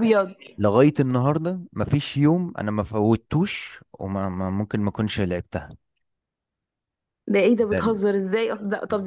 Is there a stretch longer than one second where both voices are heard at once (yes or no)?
no